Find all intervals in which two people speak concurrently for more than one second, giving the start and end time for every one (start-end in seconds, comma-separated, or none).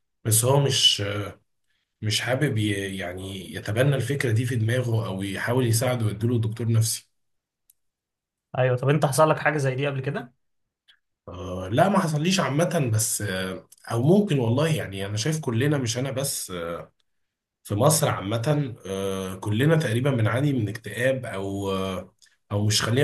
none